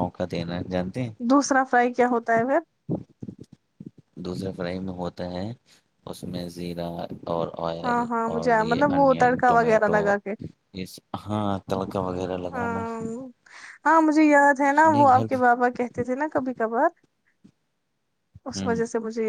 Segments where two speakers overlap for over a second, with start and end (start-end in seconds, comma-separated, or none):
7.8-10.0